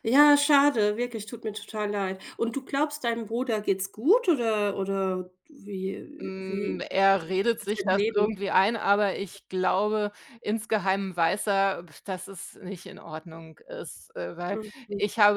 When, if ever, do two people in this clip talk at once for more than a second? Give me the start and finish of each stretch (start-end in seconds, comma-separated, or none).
6.2-8.4